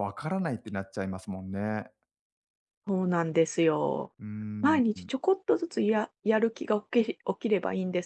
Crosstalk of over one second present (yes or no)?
no